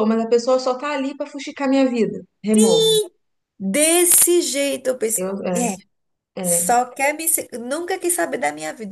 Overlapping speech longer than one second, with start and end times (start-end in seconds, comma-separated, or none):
none